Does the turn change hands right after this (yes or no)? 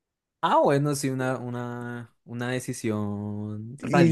yes